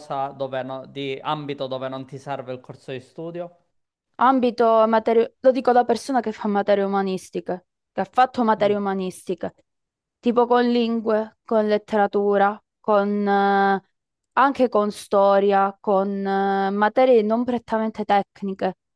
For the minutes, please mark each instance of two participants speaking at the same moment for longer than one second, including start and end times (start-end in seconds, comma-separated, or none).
none